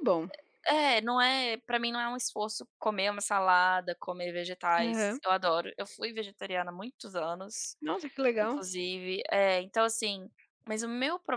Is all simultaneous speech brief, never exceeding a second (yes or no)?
yes